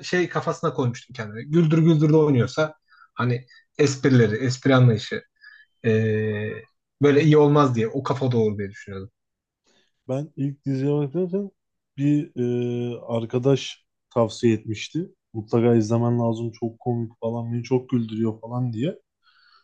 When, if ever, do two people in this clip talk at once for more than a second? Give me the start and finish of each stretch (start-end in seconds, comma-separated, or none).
none